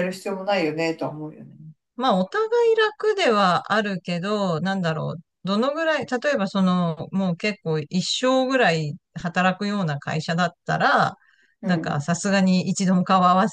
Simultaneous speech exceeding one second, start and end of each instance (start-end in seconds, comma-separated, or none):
none